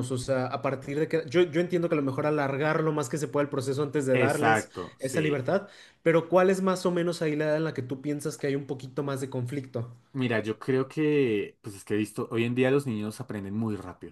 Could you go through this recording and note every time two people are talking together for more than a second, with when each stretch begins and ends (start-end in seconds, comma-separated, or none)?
4.1-5.4